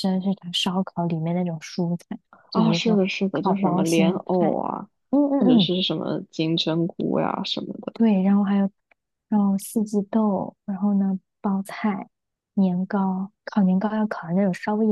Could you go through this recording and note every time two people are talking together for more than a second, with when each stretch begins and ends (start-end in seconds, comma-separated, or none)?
2.5-4.6